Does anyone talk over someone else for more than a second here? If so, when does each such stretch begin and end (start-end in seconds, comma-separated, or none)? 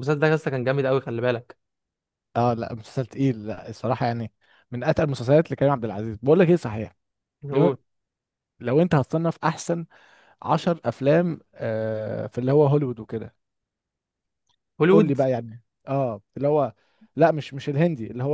none